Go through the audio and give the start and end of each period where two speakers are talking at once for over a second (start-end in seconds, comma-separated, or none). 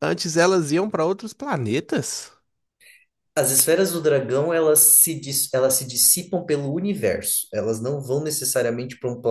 none